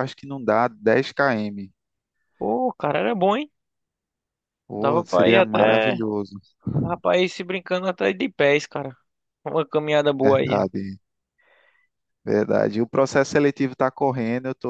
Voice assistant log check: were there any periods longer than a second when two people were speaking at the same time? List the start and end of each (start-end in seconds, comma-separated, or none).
4.8-6.0